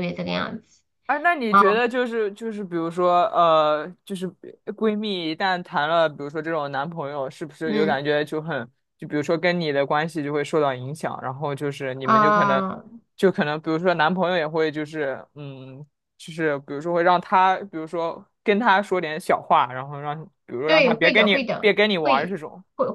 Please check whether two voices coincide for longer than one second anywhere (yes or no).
yes